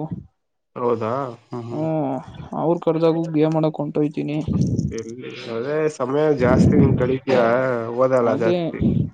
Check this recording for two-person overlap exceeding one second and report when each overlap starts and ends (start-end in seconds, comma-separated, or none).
none